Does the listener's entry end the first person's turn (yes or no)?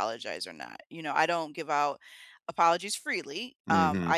no